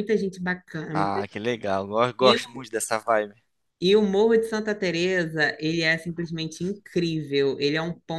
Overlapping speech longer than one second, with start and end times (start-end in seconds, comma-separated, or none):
none